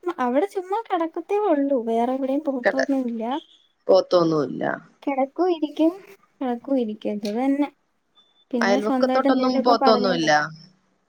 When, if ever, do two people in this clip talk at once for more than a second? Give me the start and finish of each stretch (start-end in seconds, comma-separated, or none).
8.6-10.3